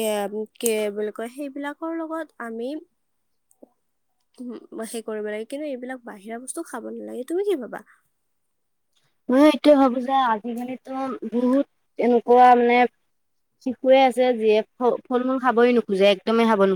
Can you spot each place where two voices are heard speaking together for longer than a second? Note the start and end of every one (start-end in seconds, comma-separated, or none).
none